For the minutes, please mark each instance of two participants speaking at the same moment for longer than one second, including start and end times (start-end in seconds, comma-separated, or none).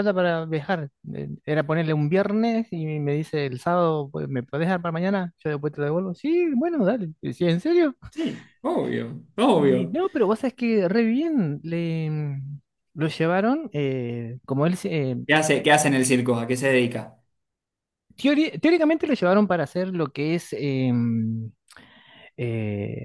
none